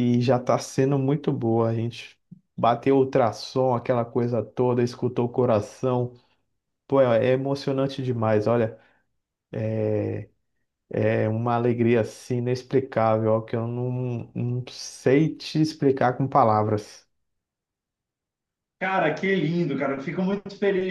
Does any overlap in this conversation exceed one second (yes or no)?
no